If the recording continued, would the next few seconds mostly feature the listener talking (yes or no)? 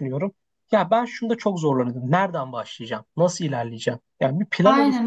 yes